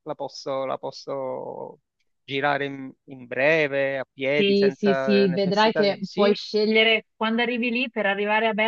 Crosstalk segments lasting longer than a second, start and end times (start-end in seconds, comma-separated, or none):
4.3-6.4